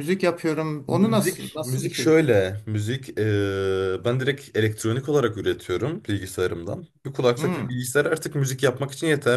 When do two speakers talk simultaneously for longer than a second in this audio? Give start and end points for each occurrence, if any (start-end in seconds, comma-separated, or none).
0.9-2.1